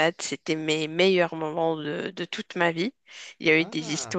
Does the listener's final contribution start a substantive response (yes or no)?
no